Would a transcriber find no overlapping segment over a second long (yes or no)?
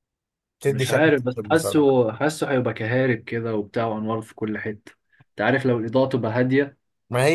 no